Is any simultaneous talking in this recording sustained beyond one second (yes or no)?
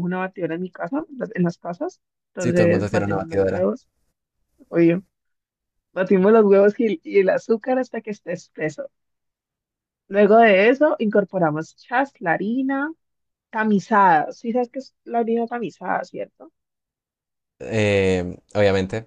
yes